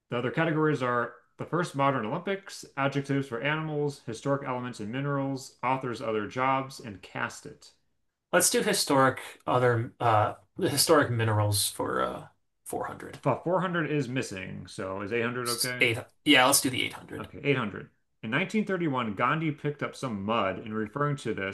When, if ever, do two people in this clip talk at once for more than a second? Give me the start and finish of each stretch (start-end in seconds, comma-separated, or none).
none